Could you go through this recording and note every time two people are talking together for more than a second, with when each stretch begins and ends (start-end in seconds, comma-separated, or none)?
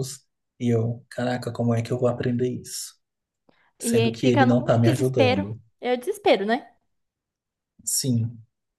3.8-5.6